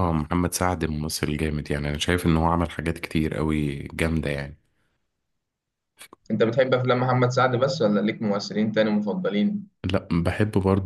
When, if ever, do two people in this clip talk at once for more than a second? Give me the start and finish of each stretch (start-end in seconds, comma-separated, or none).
none